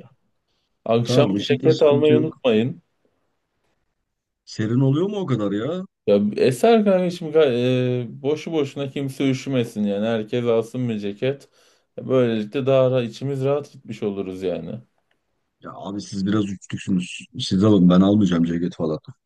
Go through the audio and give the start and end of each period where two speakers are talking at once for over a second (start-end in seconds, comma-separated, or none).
1.0-2.4